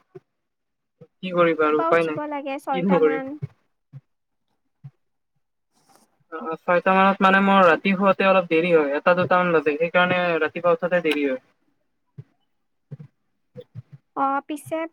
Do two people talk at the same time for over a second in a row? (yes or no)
yes